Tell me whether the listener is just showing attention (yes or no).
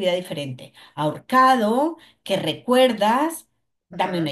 yes